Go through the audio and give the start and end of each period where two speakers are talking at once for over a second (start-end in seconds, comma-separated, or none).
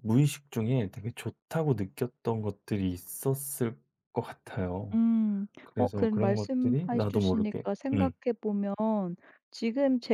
5.6-8.1